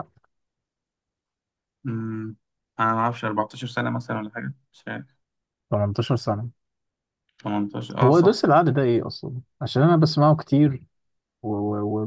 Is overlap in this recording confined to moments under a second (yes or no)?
yes